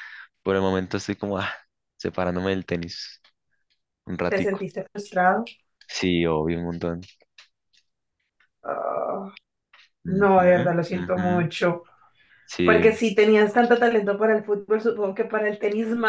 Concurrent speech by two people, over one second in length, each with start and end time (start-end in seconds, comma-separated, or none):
10.1-11.5